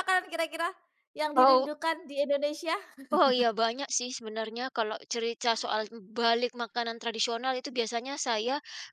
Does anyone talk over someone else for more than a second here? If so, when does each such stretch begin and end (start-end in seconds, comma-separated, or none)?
none